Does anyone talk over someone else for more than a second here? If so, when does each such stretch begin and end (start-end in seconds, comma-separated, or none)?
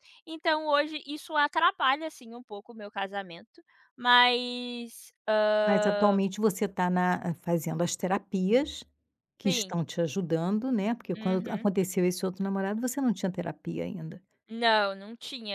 none